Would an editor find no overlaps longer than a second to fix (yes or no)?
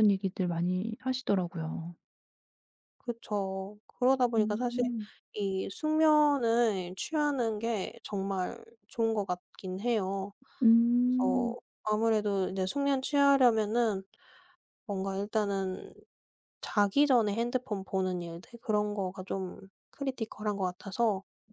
yes